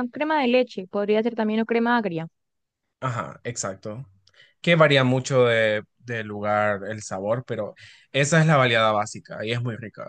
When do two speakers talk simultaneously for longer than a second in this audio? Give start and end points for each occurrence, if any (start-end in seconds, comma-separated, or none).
none